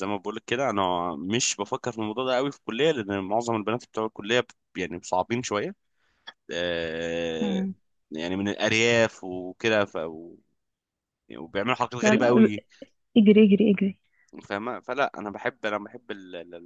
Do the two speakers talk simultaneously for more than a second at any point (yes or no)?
no